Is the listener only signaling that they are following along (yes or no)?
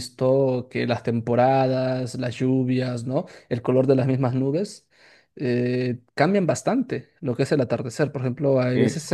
yes